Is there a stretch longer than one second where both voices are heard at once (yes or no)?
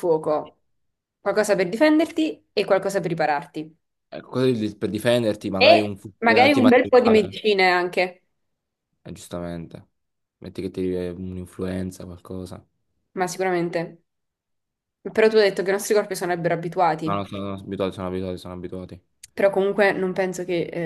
yes